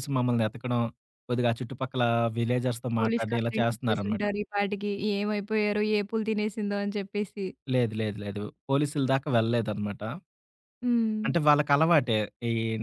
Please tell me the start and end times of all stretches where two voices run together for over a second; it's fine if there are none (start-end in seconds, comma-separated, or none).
3.0-4.2